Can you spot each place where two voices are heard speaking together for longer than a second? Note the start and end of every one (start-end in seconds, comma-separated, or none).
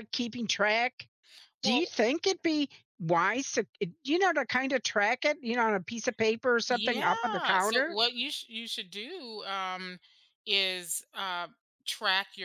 6.7-8.0